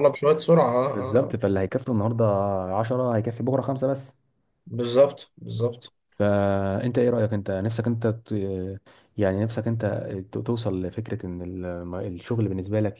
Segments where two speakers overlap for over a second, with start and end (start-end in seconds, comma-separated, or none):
none